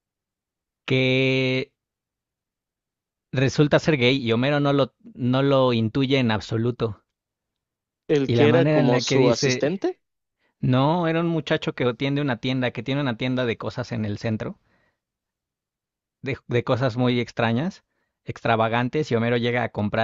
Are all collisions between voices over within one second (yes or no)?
no